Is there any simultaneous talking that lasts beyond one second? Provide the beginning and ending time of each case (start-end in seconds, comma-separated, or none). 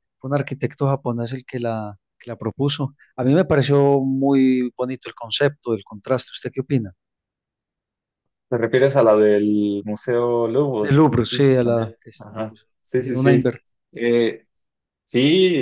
10.8-13.6